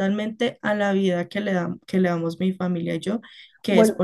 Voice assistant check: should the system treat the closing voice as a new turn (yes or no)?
no